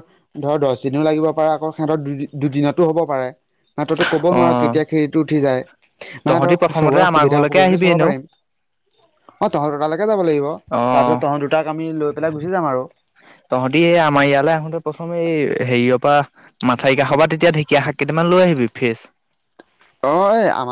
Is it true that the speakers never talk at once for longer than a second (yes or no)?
no